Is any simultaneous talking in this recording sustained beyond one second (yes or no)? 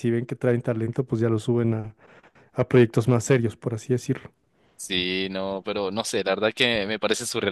no